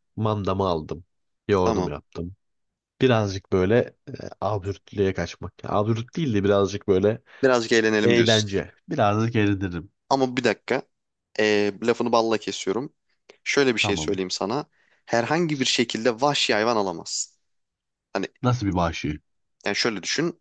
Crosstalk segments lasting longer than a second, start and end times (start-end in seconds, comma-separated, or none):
none